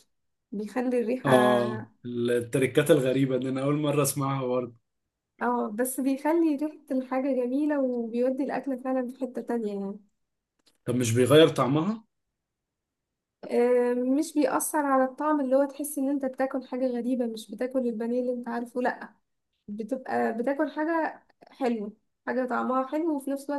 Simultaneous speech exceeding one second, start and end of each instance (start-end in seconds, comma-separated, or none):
none